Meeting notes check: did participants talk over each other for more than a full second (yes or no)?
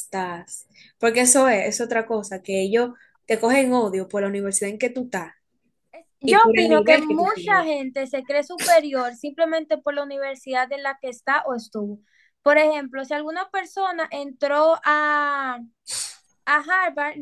yes